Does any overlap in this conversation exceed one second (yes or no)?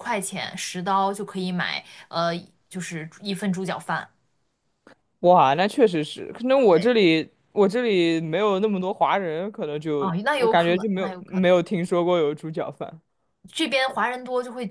yes